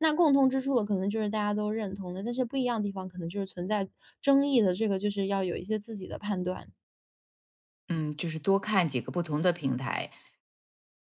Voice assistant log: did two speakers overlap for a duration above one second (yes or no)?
no